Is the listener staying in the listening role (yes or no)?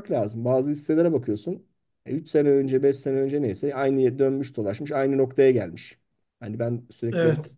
yes